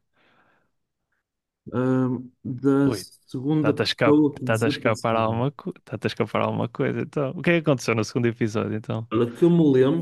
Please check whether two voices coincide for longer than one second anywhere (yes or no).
yes